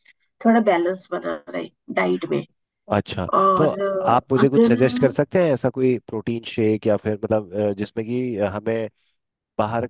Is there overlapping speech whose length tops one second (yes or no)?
yes